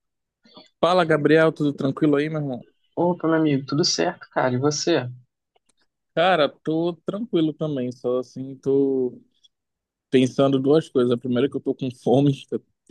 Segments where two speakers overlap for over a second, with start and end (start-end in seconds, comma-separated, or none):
none